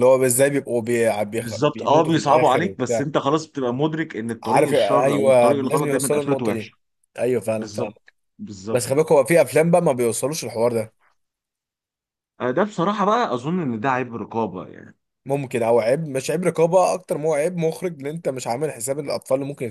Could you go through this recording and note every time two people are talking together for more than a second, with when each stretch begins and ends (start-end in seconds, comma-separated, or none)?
1.3-3.0, 4.4-6.7